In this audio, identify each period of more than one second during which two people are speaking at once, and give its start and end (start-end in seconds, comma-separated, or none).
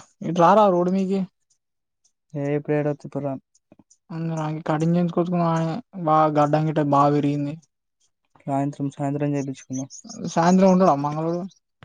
none